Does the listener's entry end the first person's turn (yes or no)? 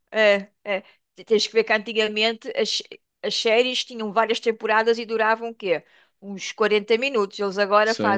yes